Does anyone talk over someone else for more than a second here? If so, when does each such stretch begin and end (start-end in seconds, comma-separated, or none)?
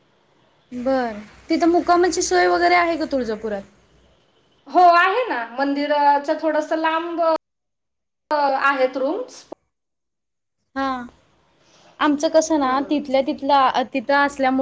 none